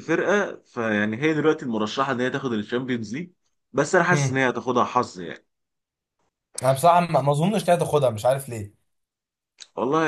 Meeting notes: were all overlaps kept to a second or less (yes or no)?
yes